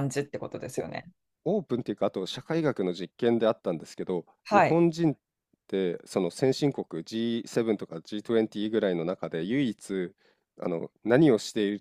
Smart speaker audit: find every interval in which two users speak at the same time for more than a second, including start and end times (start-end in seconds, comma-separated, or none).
none